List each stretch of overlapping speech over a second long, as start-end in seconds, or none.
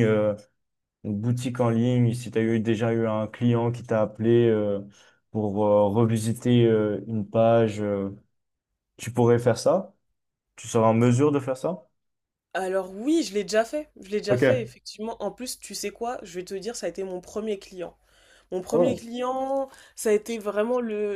none